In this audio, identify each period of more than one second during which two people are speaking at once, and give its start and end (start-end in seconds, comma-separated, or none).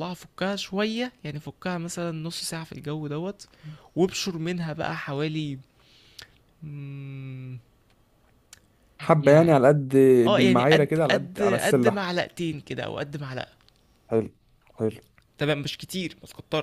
10.3-12.0